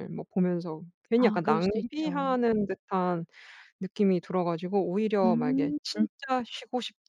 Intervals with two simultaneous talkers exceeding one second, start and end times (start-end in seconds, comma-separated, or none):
1.2-2.4